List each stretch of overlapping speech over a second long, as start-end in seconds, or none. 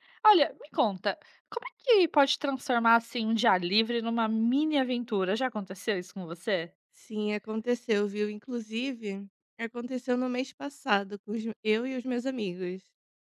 none